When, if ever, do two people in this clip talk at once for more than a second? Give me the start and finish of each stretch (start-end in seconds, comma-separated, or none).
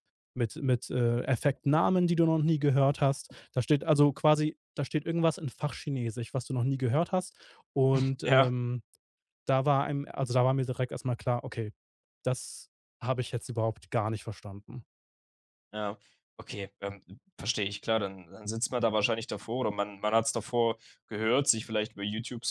none